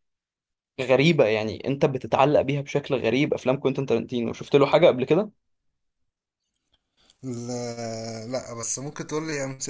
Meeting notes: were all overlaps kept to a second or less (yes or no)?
yes